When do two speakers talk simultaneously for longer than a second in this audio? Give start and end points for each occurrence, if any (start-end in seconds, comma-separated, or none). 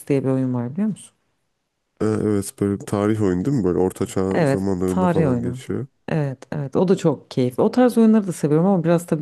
4.3-5.6